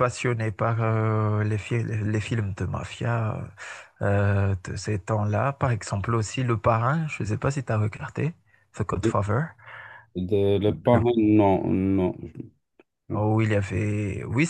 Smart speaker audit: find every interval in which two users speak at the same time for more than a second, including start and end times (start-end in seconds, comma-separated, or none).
none